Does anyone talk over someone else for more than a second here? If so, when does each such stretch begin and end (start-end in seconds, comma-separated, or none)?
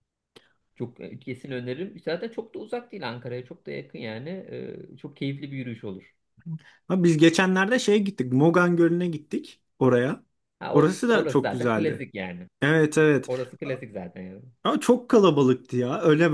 10.7-12.1